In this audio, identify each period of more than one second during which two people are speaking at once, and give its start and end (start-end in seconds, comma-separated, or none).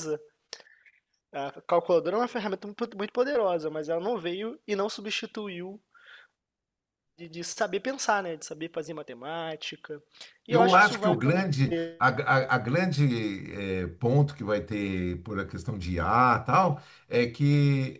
10.5-12.0